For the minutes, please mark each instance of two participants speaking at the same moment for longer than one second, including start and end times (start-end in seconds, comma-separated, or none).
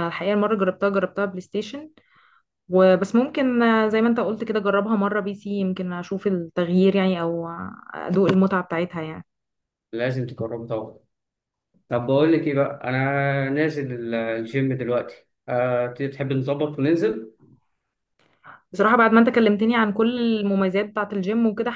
none